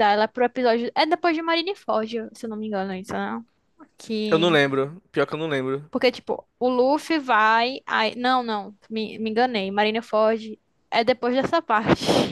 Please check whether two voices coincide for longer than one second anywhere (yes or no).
no